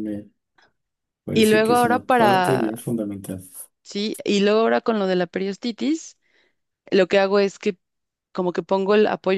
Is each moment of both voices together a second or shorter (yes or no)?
no